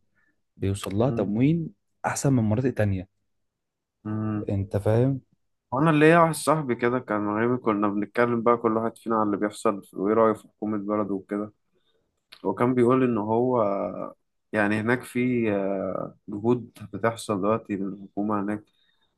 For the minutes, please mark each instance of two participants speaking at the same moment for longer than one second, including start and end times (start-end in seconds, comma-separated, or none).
none